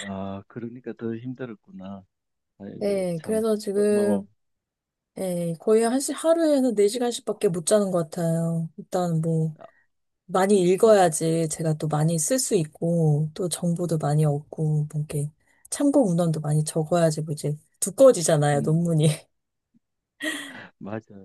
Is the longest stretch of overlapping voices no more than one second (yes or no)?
no